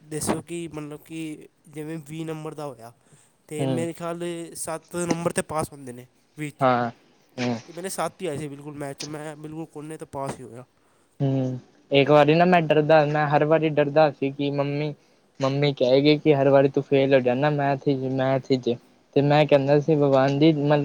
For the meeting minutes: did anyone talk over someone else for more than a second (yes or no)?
no